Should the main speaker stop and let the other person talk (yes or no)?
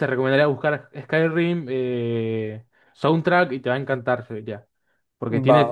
no